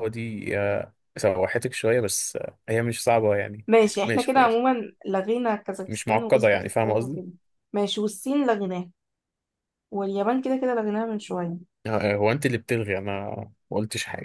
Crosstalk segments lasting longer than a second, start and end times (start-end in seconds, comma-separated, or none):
5.9-7.2